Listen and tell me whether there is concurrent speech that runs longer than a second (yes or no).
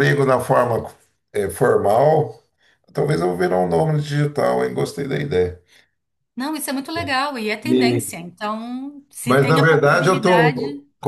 yes